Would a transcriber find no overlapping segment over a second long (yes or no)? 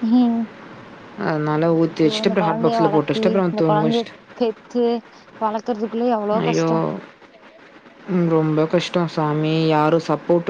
no